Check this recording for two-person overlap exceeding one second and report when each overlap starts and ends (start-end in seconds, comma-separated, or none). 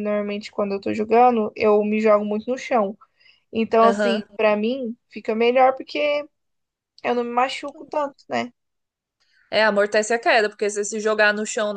none